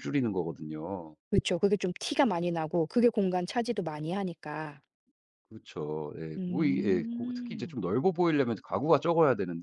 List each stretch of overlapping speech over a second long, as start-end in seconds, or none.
6.4-7.8